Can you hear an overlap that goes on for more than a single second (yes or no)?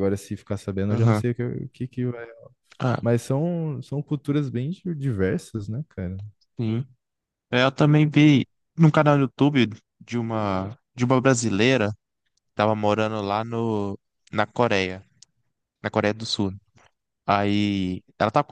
no